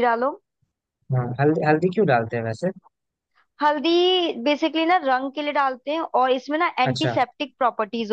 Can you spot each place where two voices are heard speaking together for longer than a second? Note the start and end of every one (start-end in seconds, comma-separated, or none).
none